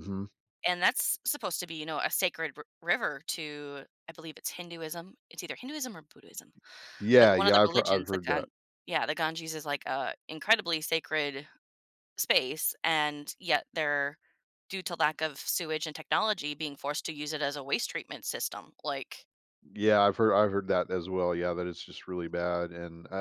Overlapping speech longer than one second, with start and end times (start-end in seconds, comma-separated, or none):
7.2-8.5